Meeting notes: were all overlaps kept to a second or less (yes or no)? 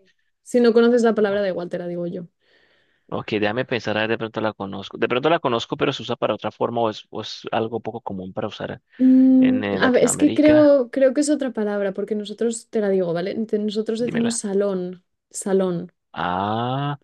no